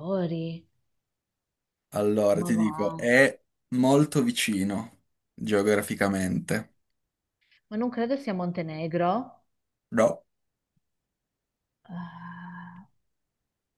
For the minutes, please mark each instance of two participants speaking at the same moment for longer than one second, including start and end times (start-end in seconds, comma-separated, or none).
none